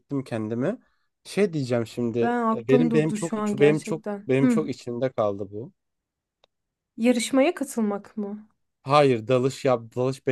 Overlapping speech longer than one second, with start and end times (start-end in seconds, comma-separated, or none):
2.5-4.6